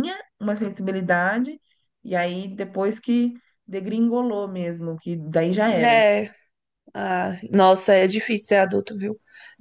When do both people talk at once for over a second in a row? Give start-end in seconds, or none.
none